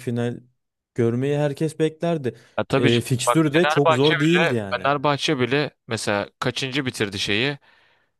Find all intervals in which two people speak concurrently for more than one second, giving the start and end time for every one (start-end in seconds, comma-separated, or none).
2.8-4.9